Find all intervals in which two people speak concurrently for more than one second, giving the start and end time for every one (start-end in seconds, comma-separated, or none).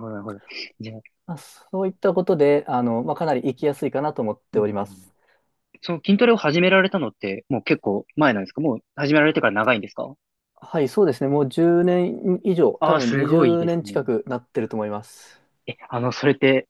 12.8-14.1